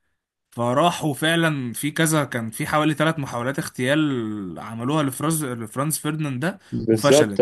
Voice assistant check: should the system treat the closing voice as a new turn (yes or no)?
yes